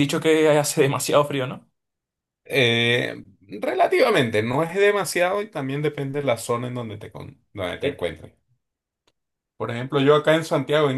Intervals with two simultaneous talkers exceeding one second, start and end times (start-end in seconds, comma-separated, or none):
none